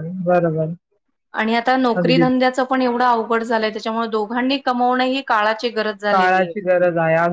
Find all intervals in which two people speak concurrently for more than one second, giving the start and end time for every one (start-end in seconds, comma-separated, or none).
none